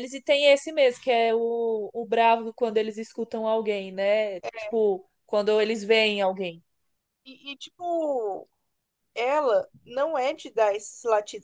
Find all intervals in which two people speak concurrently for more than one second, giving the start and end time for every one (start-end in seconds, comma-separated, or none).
none